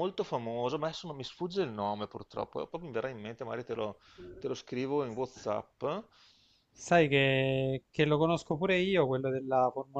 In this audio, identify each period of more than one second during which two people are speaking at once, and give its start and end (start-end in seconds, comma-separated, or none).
none